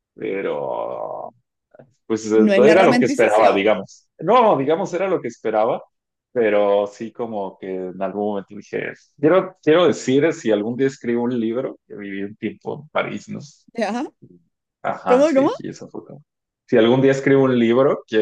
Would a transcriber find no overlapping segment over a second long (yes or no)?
no